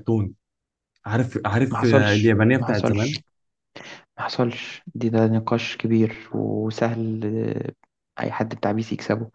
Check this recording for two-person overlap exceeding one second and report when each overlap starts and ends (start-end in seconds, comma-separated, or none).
1.7-3.1